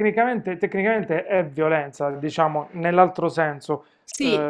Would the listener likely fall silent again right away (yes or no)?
yes